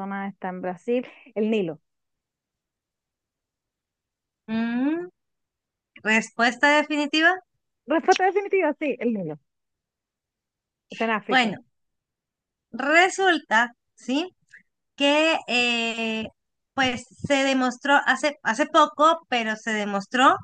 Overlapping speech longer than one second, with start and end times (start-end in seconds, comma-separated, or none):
none